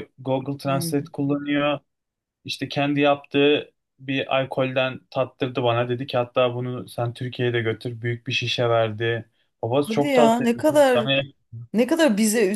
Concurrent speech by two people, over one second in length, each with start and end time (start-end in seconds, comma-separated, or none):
9.8-11.1